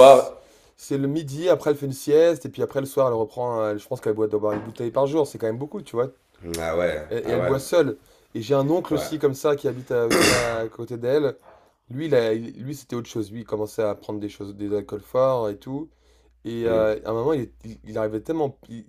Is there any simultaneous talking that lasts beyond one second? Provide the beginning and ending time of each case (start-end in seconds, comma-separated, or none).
none